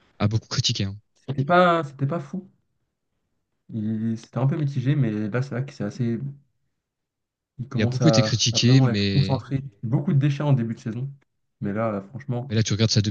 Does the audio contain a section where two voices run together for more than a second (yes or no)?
yes